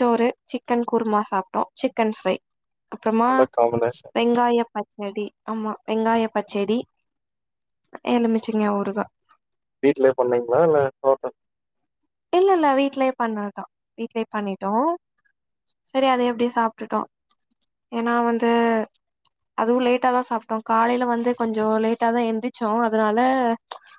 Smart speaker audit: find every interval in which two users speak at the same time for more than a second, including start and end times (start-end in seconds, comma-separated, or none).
none